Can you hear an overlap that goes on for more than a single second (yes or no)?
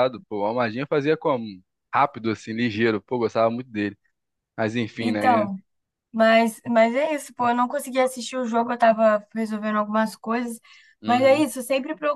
no